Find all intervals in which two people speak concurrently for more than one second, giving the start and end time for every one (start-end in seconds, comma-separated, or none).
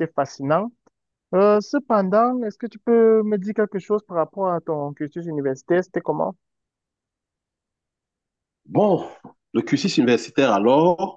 none